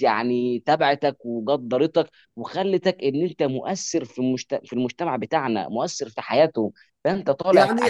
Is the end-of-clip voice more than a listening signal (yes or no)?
yes